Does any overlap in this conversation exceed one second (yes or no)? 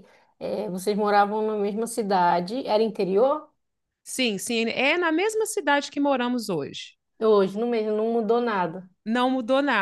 no